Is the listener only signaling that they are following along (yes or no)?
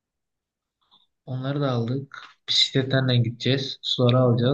yes